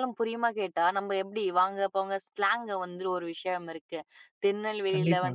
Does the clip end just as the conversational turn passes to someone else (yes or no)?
no